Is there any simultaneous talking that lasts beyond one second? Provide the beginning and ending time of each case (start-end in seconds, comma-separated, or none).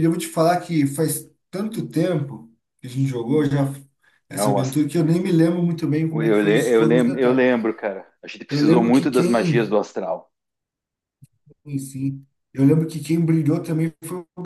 6.1-7.5, 8.5-9.8